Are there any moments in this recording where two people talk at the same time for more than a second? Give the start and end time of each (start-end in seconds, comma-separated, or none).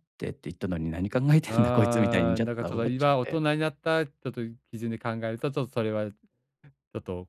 1.5-3.4